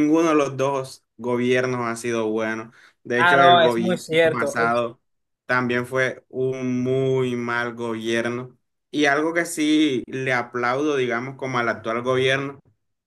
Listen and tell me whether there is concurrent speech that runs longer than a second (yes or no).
yes